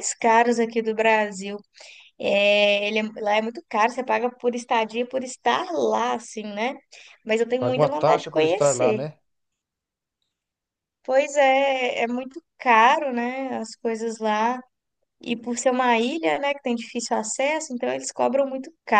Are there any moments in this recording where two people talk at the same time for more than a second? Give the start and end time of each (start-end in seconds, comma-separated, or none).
7.6-9.0